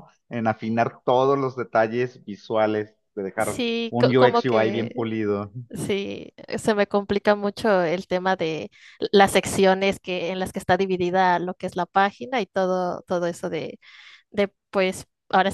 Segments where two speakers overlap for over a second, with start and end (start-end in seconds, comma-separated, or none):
3.4-5.1